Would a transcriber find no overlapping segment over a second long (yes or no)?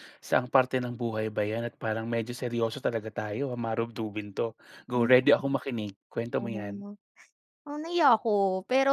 yes